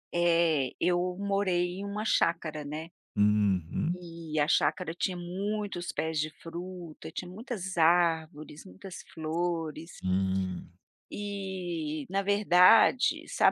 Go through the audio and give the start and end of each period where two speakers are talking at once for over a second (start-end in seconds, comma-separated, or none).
none